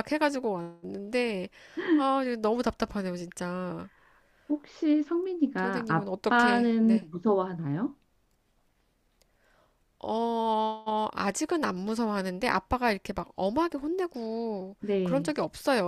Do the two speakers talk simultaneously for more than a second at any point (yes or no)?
yes